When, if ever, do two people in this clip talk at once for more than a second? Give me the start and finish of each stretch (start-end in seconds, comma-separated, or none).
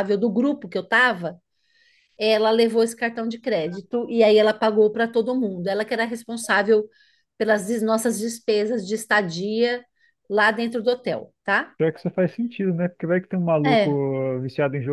none